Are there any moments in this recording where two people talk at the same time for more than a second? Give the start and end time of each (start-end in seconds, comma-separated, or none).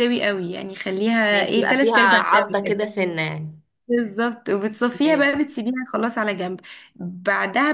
1.3-2.8